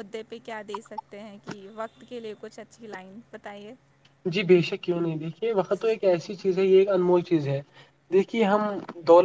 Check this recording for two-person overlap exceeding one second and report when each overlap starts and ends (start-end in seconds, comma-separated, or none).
none